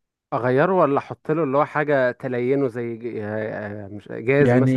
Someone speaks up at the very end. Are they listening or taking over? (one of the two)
taking over